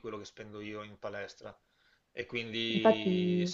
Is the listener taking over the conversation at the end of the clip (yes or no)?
no